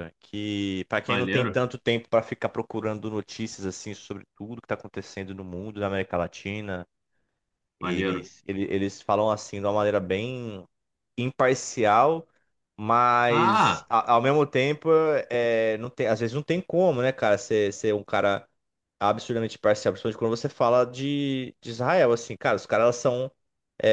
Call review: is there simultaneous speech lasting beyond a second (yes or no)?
no